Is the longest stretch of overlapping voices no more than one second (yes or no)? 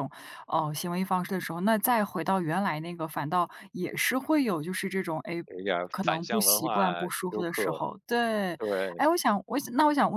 no